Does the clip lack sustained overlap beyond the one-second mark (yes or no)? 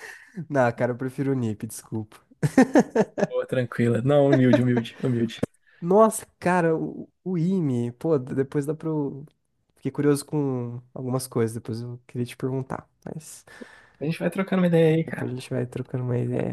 yes